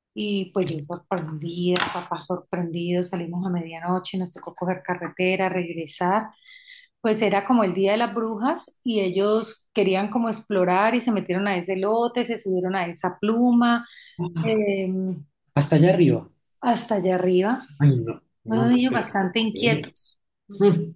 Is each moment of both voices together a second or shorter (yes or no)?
no